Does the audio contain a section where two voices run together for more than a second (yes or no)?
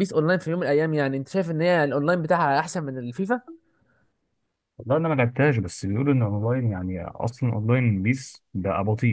no